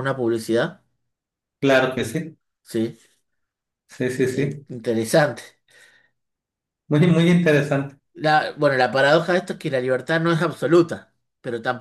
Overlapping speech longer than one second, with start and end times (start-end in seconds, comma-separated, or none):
none